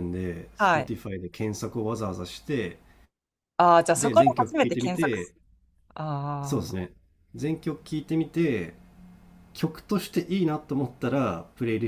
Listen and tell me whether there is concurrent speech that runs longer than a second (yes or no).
yes